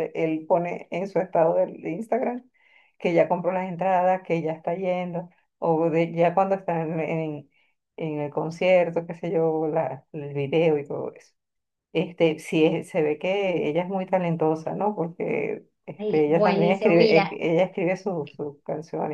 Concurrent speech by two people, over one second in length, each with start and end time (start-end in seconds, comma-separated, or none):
16.0-17.3